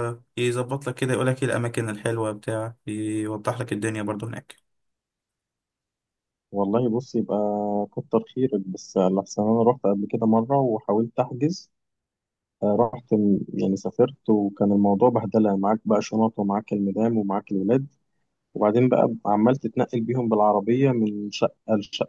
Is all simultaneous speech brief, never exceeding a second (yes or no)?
yes